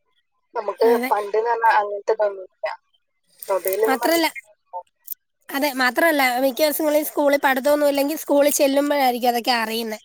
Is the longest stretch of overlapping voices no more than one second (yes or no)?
yes